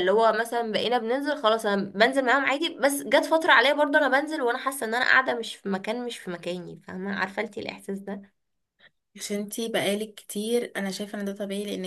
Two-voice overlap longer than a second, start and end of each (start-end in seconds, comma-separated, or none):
none